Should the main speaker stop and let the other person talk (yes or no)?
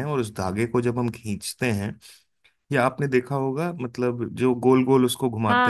yes